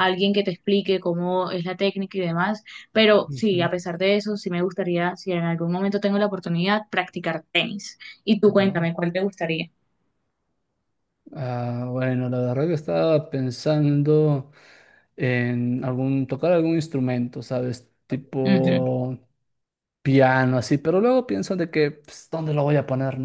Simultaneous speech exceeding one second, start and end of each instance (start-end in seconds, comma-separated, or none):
none